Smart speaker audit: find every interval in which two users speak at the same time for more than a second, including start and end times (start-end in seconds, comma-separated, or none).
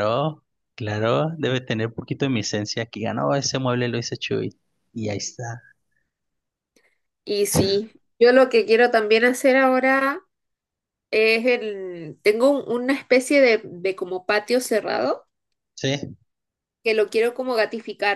none